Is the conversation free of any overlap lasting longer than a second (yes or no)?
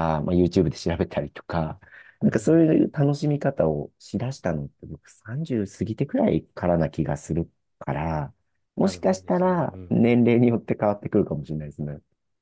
no